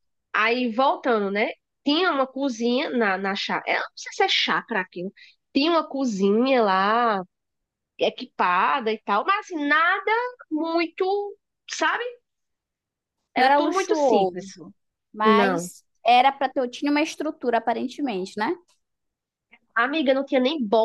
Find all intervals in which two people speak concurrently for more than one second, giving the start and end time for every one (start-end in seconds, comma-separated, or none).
13.4-14.6